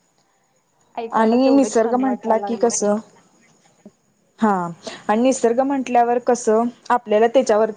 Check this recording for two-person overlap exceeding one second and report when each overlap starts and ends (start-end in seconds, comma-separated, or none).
1.2-2.8